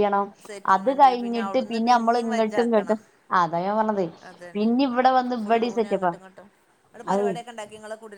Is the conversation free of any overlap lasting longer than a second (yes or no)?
no